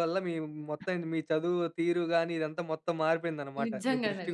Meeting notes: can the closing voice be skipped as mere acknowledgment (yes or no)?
no